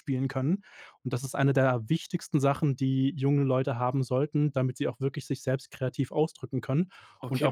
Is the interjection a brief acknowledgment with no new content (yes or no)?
no